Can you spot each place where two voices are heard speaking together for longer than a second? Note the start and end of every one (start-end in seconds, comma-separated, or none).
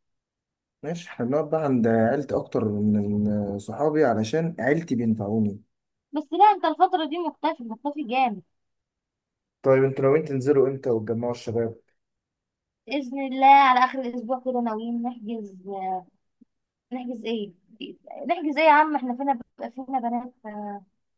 none